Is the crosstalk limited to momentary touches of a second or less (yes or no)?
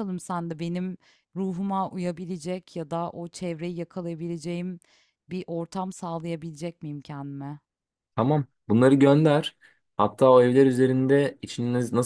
yes